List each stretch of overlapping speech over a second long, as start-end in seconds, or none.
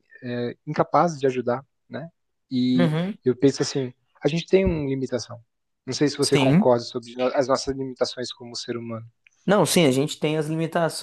none